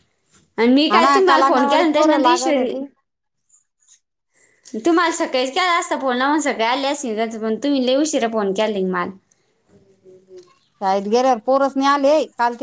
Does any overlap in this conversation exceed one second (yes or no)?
yes